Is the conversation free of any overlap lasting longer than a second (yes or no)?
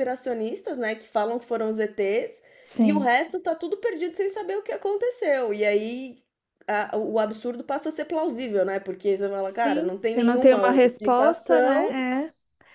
no